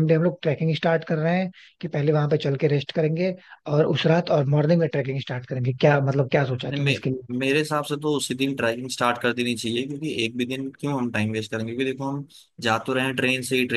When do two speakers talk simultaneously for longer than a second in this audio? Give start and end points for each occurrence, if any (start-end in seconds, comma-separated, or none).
none